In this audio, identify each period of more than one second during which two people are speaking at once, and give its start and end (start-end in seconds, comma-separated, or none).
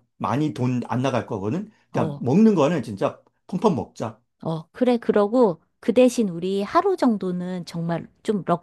none